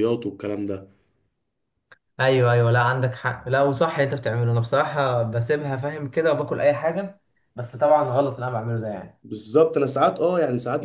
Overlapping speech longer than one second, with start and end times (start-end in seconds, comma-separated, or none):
none